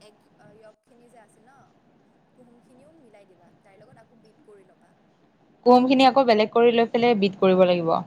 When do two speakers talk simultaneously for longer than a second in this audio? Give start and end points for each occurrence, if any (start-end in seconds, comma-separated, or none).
none